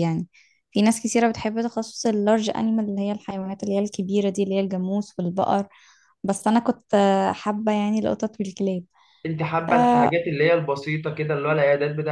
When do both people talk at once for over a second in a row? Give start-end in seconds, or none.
none